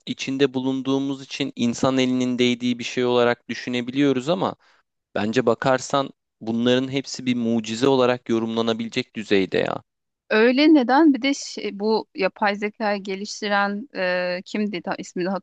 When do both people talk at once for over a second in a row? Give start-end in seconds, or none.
none